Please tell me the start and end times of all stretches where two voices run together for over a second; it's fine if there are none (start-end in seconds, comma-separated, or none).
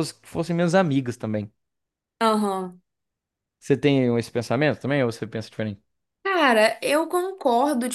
none